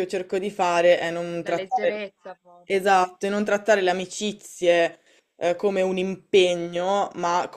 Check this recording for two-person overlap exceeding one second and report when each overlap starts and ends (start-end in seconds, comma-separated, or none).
none